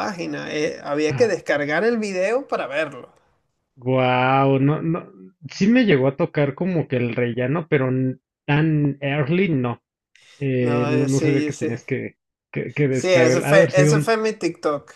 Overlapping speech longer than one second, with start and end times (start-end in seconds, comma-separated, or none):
10.6-11.8, 12.9-14.2